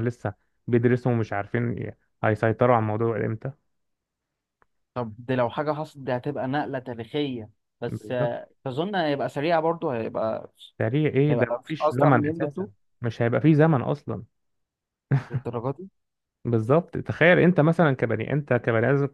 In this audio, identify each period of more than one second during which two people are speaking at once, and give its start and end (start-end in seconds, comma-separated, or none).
11.3-12.7